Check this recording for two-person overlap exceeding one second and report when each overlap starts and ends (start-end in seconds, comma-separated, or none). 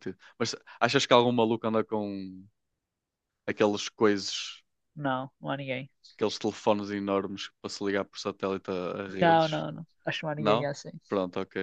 none